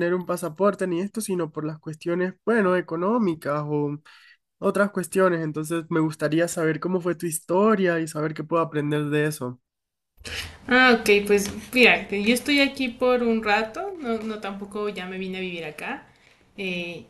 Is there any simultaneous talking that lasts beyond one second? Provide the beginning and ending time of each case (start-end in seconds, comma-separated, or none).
none